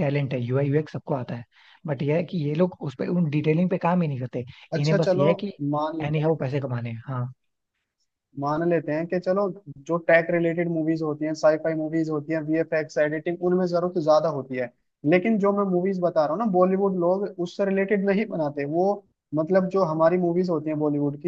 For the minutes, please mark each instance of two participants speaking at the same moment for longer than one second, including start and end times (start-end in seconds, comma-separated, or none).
none